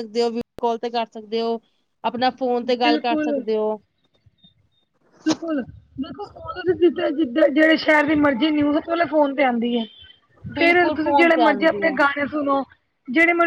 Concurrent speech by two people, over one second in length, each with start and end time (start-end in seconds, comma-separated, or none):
10.6-12.0